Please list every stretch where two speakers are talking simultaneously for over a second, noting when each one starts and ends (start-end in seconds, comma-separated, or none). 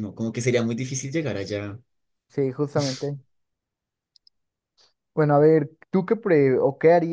none